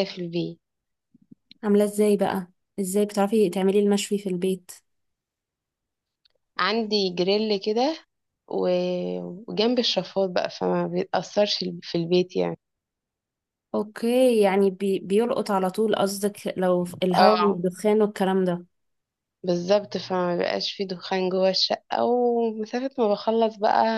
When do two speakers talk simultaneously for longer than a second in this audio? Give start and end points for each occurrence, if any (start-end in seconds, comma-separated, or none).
none